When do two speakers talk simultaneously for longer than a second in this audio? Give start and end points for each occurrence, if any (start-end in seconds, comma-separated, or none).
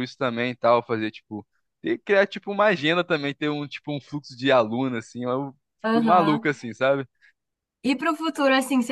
none